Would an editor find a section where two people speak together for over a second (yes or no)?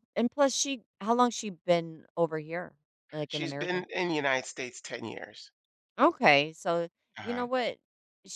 no